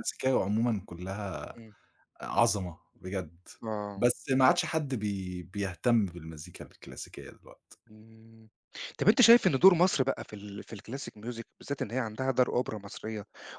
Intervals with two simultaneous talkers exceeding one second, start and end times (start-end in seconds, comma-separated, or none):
none